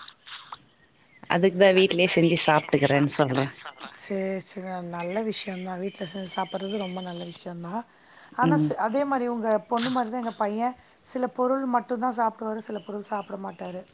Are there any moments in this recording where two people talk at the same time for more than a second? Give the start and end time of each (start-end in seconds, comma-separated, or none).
1.8-3.4